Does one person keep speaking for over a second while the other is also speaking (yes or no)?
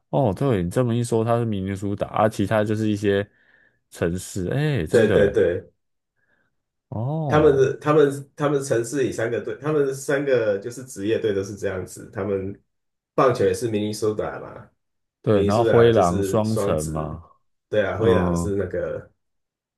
yes